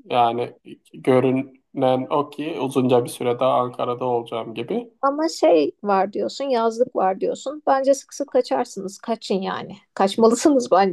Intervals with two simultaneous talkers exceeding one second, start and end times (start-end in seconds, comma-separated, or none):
none